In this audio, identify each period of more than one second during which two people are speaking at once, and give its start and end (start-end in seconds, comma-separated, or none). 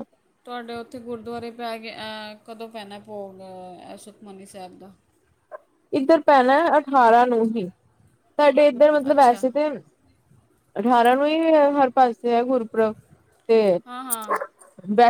none